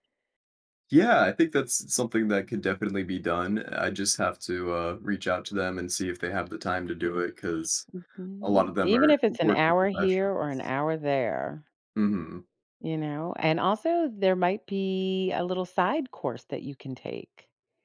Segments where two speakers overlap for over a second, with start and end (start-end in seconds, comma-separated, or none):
8.4-10.7